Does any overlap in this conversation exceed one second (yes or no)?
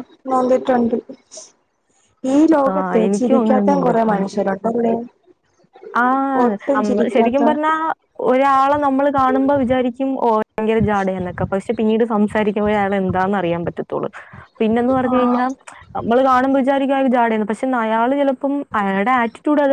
yes